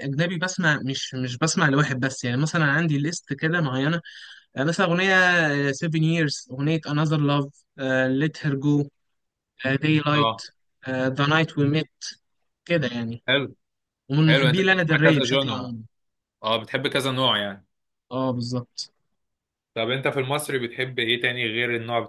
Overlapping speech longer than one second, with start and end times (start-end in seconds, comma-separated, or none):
14.3-15.8